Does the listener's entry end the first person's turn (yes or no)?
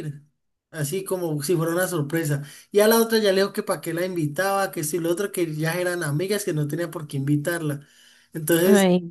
no